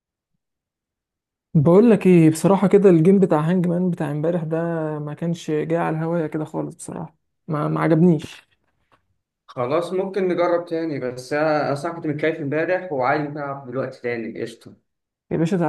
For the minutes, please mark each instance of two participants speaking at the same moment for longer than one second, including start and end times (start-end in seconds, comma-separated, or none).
none